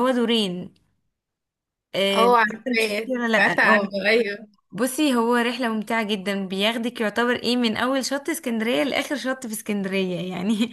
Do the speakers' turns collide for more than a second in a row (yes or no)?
yes